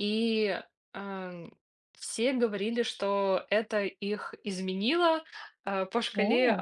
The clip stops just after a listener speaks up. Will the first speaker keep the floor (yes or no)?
yes